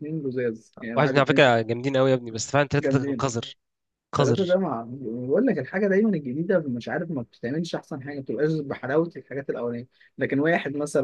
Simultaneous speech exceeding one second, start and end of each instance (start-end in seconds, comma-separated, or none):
none